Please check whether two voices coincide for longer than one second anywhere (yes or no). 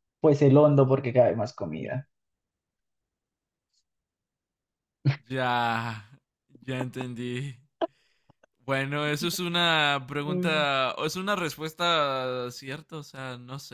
no